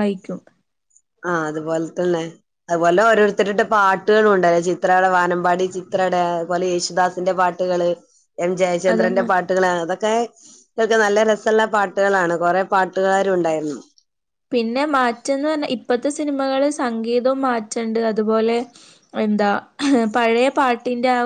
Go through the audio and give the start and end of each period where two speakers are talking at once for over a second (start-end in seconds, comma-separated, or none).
none